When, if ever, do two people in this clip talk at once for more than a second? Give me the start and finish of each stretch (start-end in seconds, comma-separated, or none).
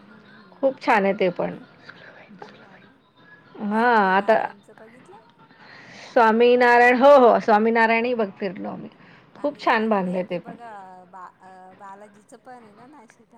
9.4-10.8